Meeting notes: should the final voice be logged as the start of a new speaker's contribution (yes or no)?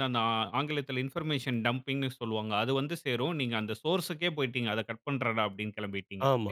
yes